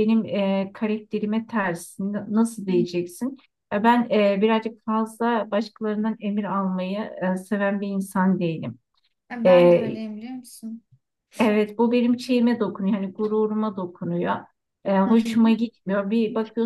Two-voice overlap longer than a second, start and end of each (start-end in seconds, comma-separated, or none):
none